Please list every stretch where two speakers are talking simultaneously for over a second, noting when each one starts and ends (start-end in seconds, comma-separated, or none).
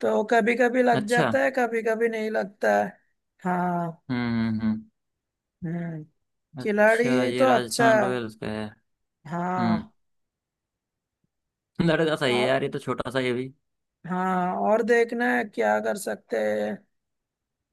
6.6-8.1